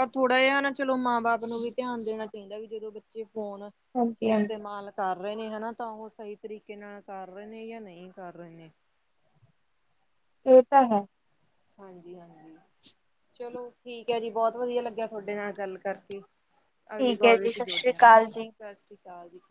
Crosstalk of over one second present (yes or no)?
yes